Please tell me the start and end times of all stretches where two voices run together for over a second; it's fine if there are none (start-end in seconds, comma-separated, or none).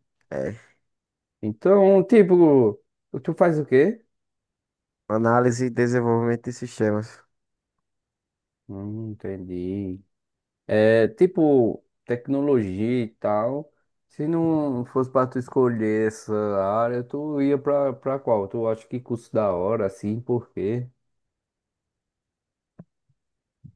none